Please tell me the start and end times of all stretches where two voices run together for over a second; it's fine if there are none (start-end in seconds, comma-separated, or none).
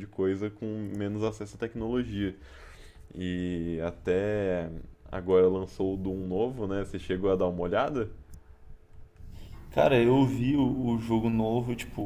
none